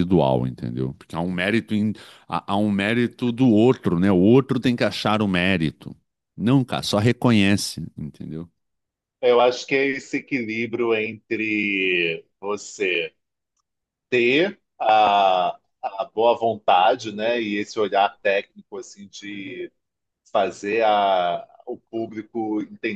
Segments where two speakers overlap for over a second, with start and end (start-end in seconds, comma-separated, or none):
none